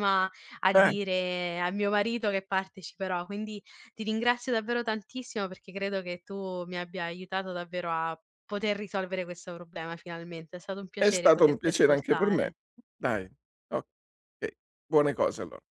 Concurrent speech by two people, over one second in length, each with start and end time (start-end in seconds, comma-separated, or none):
10.9-12.5